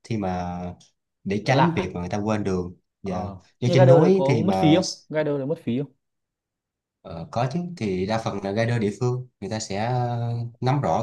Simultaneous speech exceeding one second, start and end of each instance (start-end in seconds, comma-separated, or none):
3.0-4.8